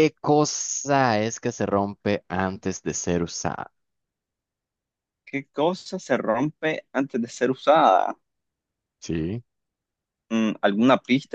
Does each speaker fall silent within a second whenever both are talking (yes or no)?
yes